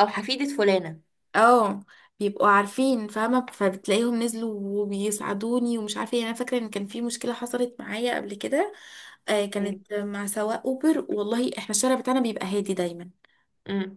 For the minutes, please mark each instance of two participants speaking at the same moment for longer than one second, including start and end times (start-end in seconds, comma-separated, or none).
none